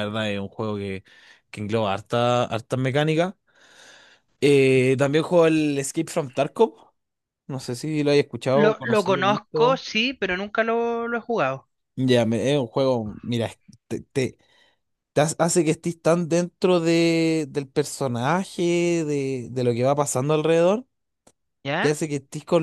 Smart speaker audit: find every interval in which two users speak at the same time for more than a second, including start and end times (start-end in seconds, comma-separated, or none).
8.5-9.8